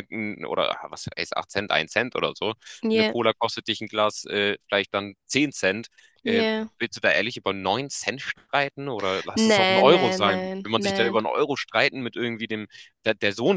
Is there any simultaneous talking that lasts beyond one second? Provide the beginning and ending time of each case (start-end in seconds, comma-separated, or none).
9.3-11.2